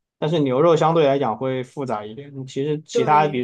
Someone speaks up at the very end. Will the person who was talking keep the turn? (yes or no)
yes